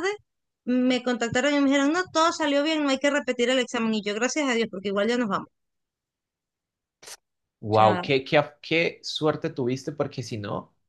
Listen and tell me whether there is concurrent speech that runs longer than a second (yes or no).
no